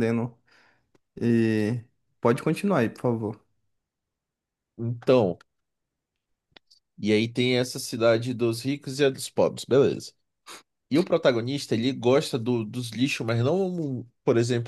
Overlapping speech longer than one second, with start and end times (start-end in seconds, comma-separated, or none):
none